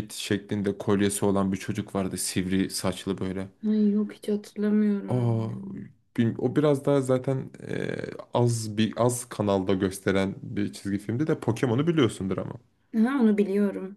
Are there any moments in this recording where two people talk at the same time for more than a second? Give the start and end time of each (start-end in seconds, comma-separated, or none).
none